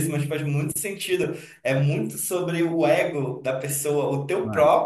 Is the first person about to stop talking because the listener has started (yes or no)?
no